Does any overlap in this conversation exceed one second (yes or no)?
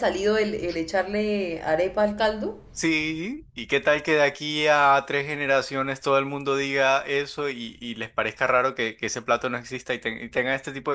no